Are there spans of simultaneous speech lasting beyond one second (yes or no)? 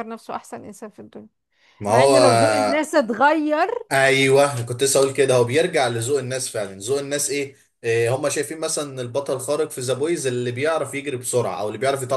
no